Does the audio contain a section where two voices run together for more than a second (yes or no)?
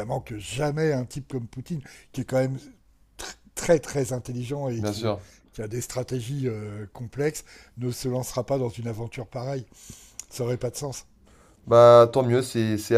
no